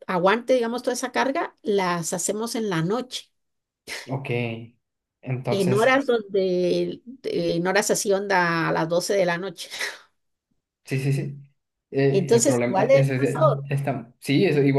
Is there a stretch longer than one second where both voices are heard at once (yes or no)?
yes